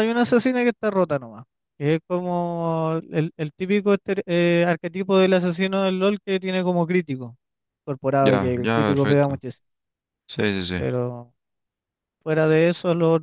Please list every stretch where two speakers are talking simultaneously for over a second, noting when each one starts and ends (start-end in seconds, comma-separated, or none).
8.2-9.4